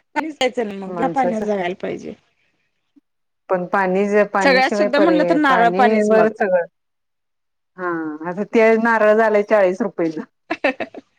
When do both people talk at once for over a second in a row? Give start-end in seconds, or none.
4.4-6.3